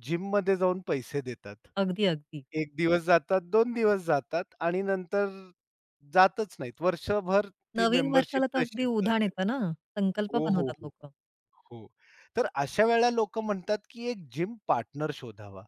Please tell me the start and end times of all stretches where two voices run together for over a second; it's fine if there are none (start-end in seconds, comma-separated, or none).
7.8-9.3